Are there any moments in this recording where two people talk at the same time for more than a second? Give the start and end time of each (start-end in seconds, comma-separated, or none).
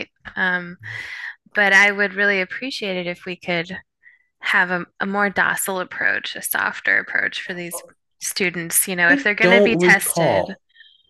9.1-10.6